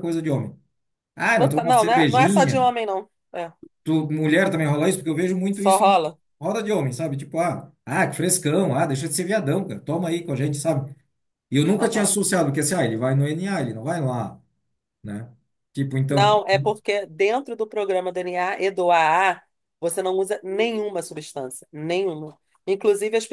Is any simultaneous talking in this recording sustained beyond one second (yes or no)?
yes